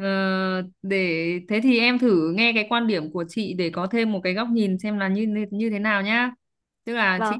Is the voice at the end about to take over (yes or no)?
no